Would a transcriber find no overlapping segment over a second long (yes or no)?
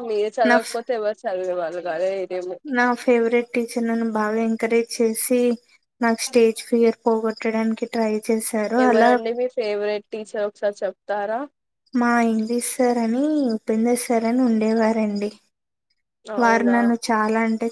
yes